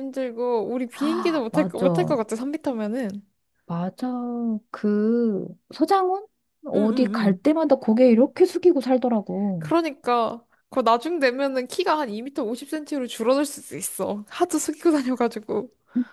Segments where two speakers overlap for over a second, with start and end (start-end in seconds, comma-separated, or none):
0.9-2.2